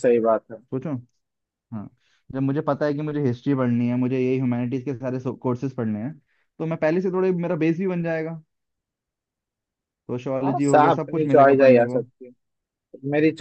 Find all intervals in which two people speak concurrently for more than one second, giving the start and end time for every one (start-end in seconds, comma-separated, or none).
10.4-12.0